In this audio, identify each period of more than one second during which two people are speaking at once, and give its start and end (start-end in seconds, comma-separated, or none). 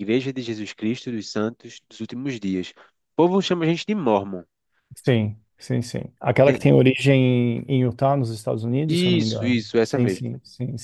8.9-10.2